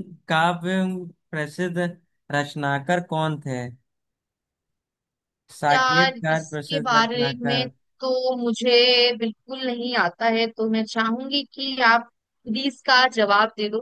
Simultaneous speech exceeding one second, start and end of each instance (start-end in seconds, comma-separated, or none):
5.7-7.7